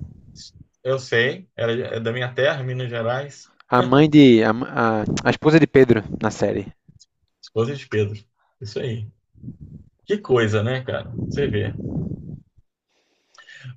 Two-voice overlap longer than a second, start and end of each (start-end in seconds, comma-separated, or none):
none